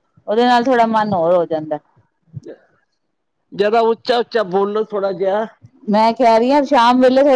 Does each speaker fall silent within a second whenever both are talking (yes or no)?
yes